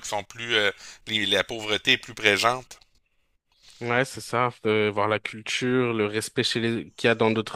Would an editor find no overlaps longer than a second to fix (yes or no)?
yes